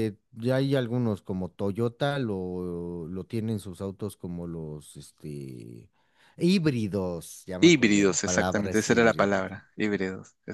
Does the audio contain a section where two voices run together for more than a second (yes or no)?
yes